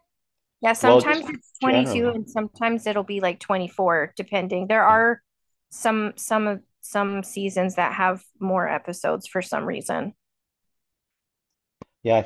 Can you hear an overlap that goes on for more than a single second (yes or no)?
yes